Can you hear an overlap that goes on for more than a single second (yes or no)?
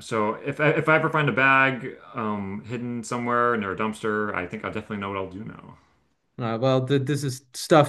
no